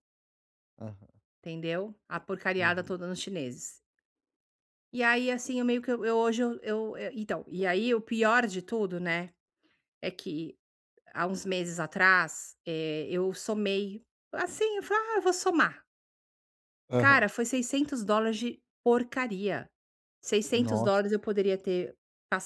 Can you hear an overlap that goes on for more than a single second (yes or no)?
no